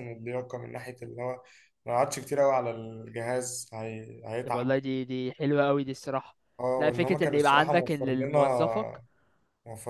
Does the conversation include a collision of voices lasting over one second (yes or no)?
yes